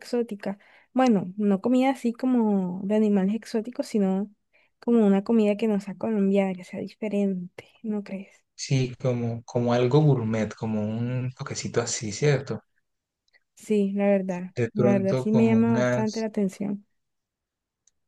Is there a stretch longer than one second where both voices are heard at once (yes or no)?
yes